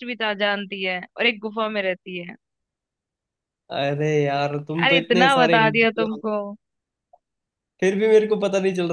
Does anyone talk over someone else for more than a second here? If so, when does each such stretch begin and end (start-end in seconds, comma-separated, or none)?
4.8-6.2